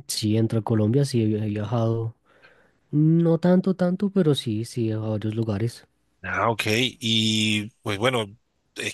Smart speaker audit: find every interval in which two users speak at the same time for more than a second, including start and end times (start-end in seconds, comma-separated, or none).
none